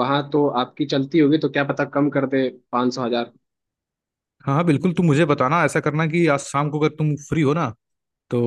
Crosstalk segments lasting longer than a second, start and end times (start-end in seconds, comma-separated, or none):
none